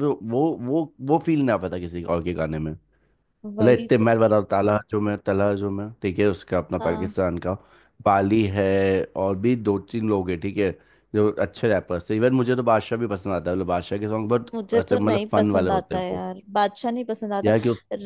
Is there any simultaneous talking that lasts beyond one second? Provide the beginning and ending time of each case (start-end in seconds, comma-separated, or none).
14.5-16.2